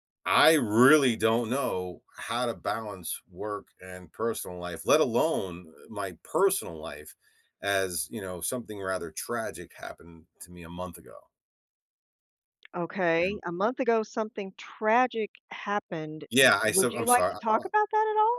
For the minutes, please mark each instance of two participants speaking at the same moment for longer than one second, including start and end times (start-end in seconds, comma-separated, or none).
16.7-17.9